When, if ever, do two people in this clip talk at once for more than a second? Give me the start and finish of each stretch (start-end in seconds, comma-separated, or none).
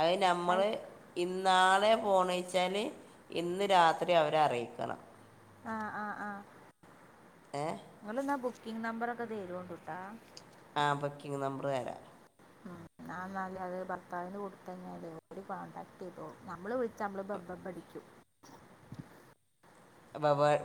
none